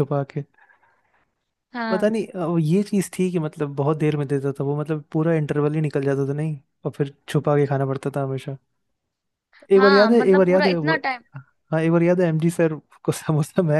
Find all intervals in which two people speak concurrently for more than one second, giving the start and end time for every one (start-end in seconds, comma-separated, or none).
9.7-10.9